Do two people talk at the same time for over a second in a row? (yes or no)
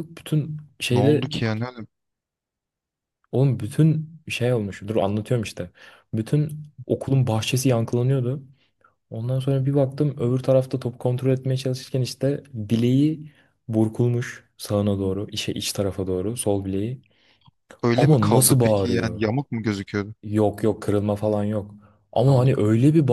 yes